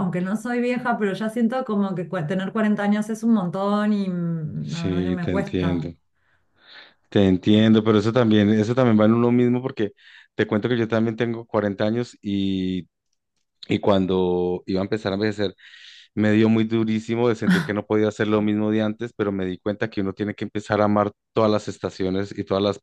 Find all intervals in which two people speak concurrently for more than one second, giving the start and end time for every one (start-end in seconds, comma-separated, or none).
4.6-5.9